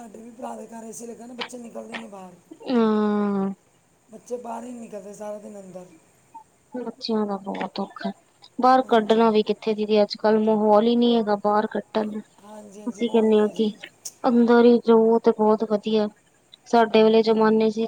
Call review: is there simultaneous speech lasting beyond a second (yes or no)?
yes